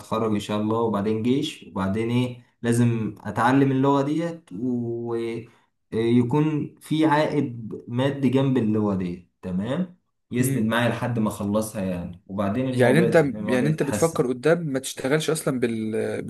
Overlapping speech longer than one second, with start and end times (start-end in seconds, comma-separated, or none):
12.7-14.3